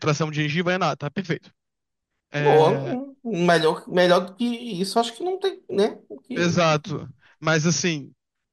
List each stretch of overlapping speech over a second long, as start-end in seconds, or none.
none